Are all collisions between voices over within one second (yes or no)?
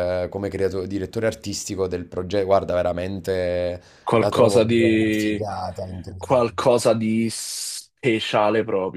no